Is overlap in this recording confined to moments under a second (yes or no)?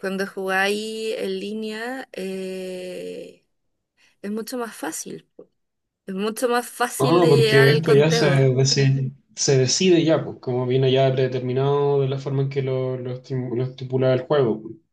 no